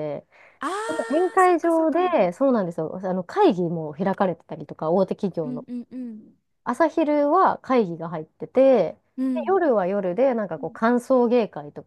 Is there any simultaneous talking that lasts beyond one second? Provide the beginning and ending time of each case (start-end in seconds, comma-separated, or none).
0.9-2.2